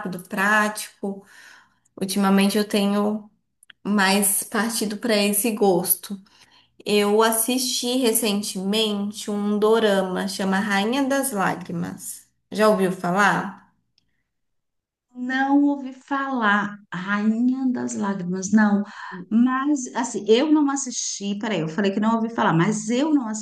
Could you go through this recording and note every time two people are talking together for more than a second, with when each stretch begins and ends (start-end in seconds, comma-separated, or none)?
none